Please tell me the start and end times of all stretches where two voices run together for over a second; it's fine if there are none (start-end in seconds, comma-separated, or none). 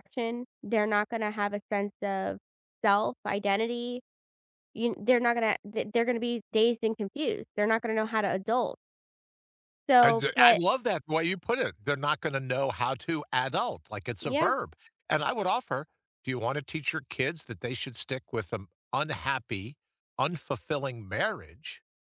none